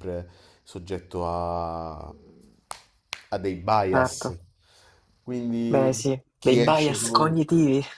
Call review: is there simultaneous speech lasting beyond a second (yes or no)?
yes